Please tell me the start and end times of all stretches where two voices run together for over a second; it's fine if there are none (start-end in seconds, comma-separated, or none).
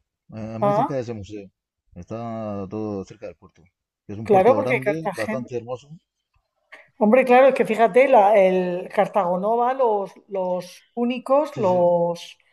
4.3-5.5